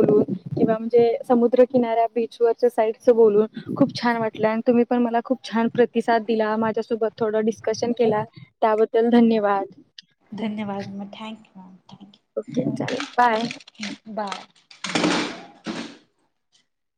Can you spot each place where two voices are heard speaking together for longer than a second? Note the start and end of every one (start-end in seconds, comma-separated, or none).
none